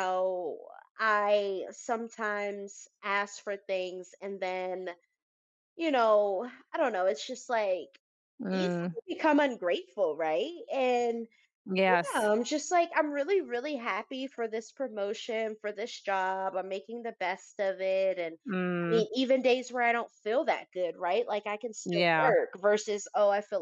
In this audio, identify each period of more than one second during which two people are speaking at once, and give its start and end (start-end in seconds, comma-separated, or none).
none